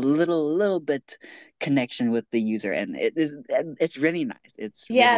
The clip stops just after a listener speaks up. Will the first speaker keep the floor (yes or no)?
no